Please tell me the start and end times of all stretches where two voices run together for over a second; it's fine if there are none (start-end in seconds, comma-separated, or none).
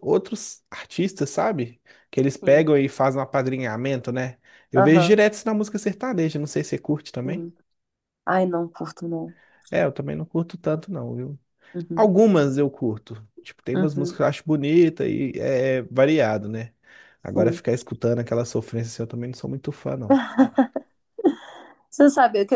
none